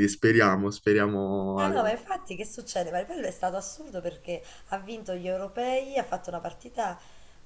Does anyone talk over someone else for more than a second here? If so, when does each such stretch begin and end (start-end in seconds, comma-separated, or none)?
none